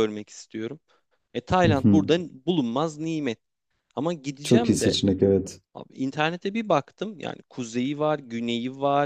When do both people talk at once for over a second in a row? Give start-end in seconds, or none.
none